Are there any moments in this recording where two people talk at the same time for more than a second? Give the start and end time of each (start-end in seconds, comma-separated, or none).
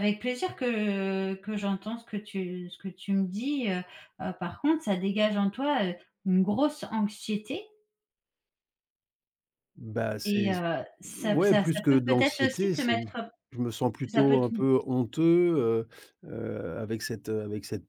11.2-12.9